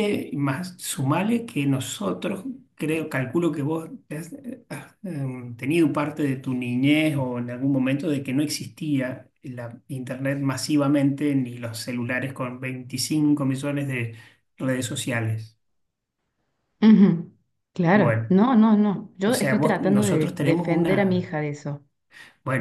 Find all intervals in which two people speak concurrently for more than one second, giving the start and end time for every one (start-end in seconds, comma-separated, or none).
19.3-21.3